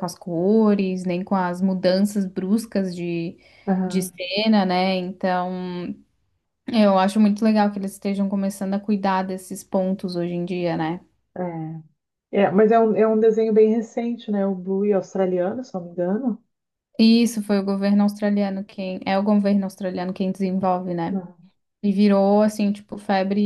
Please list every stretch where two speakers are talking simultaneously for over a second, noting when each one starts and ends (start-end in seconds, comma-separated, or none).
none